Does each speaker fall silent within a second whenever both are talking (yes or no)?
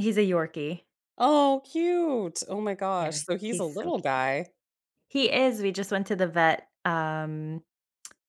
no